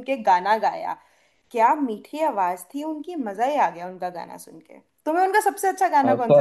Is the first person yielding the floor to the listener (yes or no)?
yes